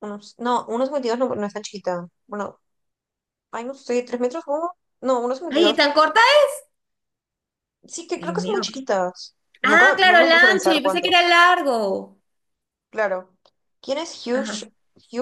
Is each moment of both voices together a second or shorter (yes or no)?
no